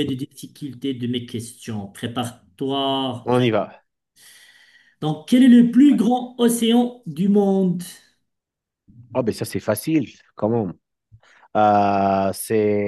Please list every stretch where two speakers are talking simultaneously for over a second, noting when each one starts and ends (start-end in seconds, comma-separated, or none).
none